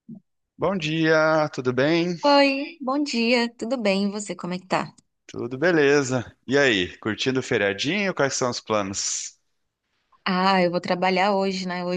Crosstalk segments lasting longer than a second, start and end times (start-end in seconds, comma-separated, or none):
none